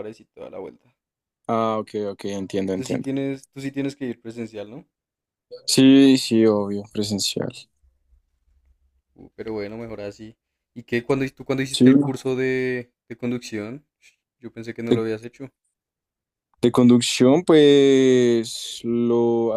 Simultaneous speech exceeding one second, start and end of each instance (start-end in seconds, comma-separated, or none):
none